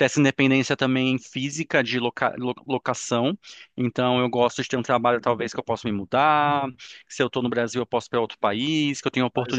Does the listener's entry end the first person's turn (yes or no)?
yes